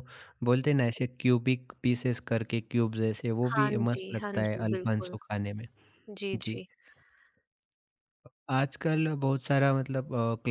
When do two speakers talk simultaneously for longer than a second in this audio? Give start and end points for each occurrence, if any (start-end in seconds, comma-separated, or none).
3.5-5.2